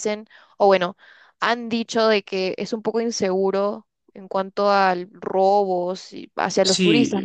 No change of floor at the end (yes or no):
no